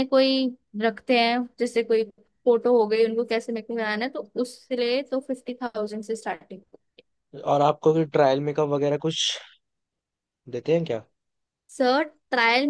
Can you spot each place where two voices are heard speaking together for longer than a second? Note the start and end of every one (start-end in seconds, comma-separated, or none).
none